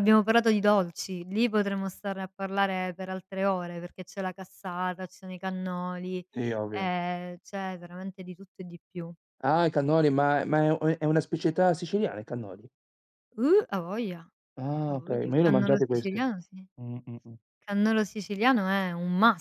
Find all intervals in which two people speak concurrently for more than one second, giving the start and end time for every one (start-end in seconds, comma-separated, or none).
14.8-16.2